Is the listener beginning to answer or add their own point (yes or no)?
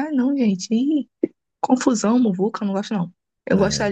no